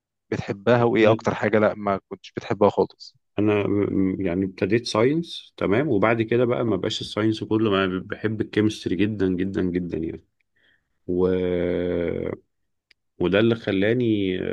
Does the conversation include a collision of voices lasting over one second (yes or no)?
no